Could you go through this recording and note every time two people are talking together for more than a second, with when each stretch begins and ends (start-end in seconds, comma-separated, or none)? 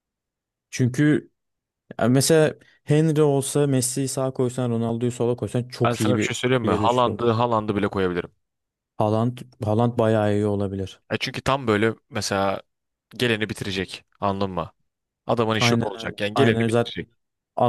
5.8-7.4, 15.6-17.0